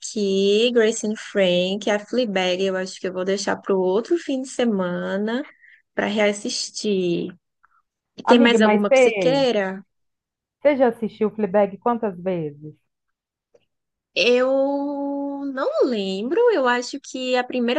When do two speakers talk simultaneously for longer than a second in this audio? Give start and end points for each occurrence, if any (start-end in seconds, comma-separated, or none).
8.2-9.4